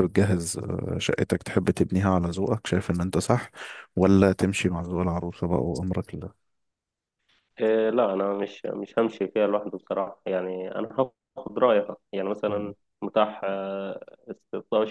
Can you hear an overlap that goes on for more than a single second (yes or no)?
no